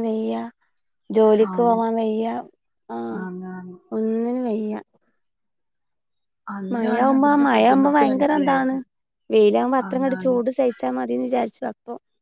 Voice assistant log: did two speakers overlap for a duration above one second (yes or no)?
yes